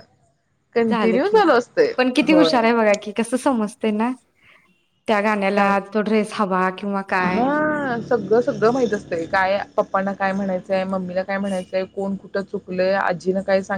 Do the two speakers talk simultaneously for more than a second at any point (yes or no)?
no